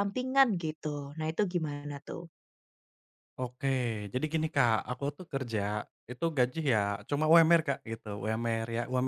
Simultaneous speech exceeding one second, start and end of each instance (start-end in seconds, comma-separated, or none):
none